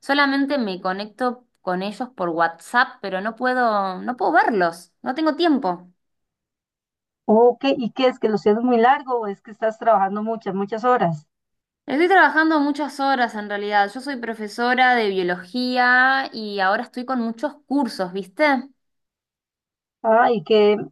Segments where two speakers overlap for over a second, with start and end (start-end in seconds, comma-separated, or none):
none